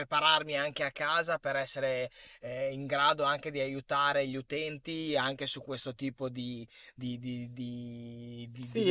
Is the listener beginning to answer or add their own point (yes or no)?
yes